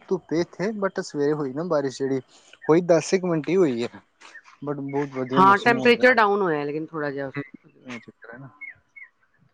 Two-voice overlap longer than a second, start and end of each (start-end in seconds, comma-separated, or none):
5.4-7.3